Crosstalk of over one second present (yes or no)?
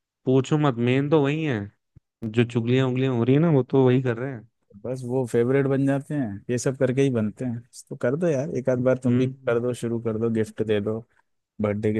no